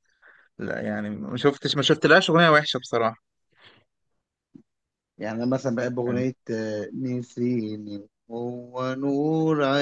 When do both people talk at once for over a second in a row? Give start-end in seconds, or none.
none